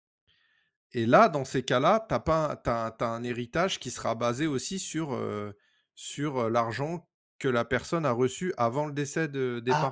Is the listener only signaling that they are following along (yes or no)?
no